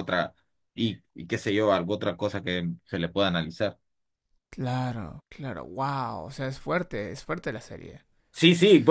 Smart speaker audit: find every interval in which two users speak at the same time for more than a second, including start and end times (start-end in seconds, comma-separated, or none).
none